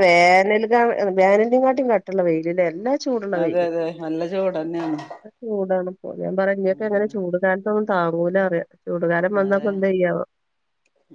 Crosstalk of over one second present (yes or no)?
no